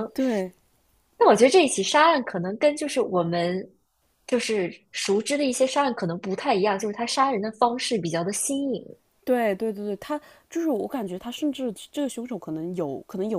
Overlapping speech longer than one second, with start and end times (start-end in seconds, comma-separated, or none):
none